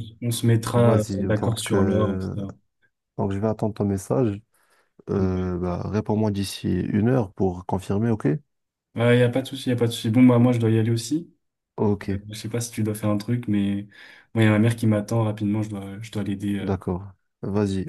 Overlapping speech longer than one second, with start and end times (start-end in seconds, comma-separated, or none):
0.7-2.3